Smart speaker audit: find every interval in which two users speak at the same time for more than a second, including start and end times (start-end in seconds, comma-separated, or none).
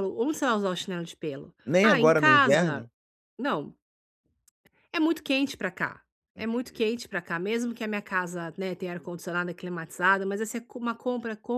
1.7-2.9